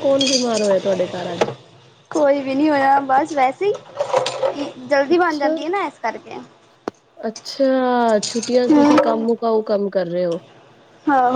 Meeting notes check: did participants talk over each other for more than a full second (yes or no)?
no